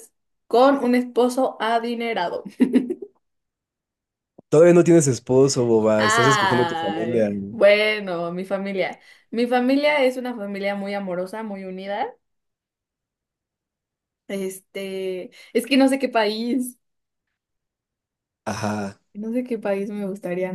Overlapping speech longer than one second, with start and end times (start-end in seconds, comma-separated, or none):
6.0-7.6